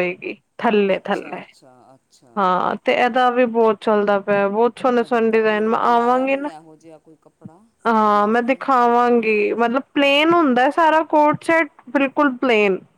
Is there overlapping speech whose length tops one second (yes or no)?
yes